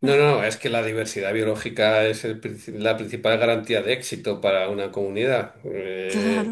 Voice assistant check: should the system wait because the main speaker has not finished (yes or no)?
yes